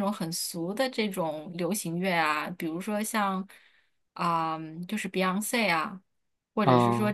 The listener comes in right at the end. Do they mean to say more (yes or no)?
no